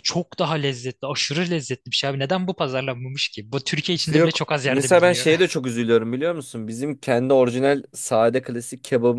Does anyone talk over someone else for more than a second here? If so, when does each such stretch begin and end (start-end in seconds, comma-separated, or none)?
3.9-5.3